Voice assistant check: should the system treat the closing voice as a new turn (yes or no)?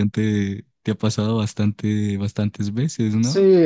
yes